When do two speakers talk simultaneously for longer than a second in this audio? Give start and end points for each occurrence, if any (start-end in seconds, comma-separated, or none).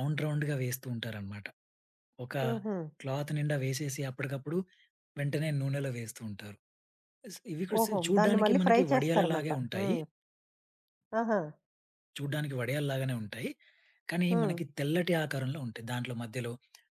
7.8-9.9